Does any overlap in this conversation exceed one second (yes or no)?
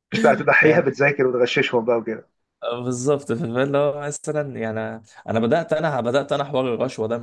no